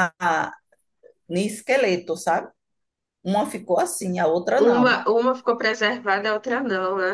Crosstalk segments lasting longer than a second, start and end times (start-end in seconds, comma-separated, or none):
none